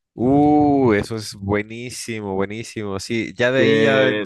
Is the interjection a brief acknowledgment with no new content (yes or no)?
yes